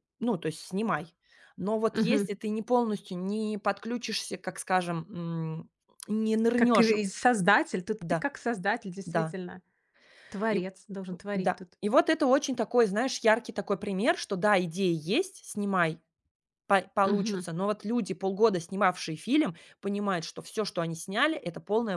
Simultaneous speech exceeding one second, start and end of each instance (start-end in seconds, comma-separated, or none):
none